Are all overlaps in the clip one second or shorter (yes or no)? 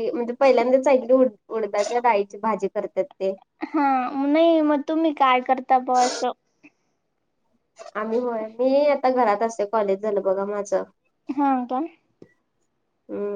yes